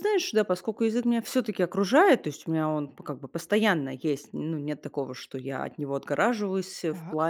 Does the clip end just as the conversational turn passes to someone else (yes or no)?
no